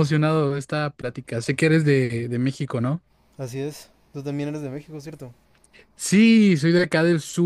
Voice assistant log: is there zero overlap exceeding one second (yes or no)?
yes